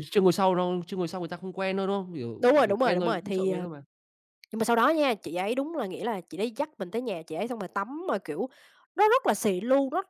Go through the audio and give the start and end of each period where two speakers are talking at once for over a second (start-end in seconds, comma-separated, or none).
2.4-3.7